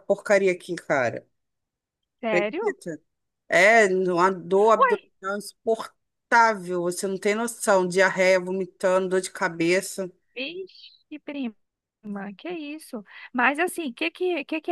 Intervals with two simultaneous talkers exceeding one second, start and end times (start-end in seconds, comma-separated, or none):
none